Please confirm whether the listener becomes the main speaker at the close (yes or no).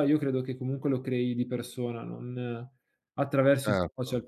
yes